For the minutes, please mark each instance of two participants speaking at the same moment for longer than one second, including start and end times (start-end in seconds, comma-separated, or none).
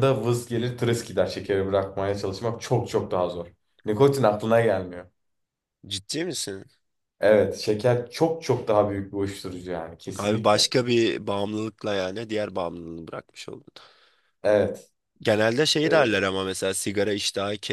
none